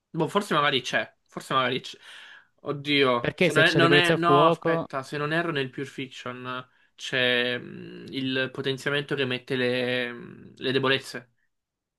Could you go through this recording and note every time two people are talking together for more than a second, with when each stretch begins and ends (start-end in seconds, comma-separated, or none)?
3.2-4.9